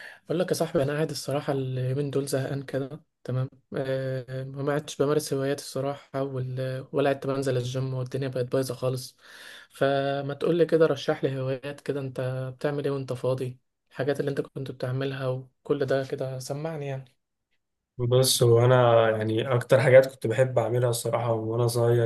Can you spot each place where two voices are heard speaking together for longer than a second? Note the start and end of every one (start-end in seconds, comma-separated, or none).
none